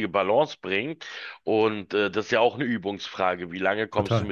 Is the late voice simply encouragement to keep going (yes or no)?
yes